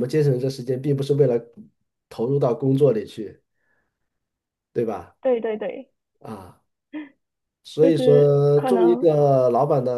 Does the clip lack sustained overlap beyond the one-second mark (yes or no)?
no